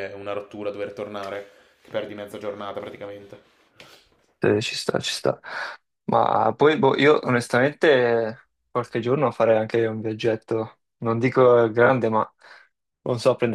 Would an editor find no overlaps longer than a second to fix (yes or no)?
yes